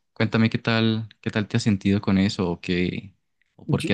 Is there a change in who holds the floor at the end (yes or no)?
no